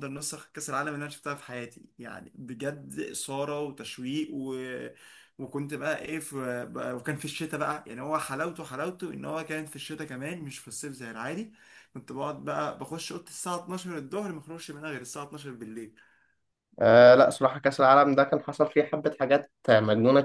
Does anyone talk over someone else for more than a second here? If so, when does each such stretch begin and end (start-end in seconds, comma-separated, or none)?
none